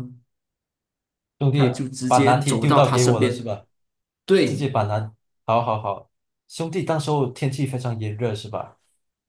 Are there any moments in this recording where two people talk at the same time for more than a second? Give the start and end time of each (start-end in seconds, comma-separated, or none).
1.5-3.5